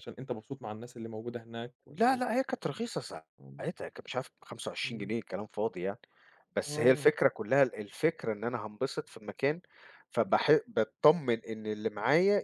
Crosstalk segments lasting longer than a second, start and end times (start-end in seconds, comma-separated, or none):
none